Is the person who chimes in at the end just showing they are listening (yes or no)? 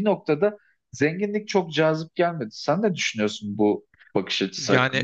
no